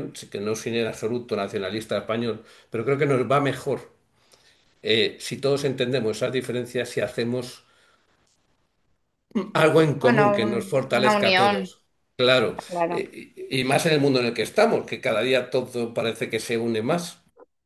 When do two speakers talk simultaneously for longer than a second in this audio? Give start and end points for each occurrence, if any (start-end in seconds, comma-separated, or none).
10.0-11.7